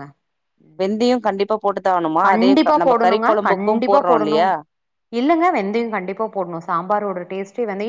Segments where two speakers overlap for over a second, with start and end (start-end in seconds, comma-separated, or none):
2.3-4.4